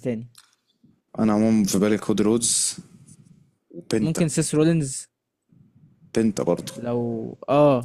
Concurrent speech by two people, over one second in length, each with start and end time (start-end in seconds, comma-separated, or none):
none